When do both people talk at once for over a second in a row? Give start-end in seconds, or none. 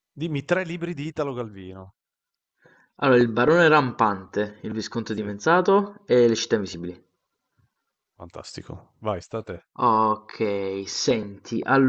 none